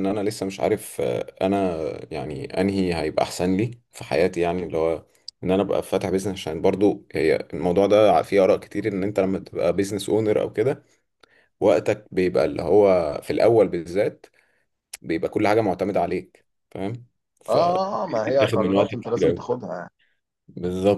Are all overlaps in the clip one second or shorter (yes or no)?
no